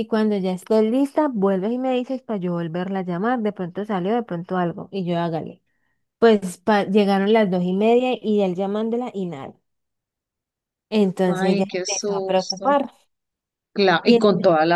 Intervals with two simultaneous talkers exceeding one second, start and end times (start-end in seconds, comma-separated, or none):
11.2-12.8